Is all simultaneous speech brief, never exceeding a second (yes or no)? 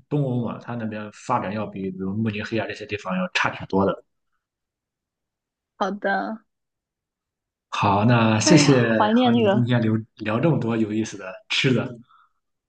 no